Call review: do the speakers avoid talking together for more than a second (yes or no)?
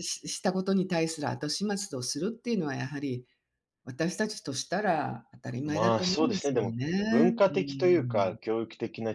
no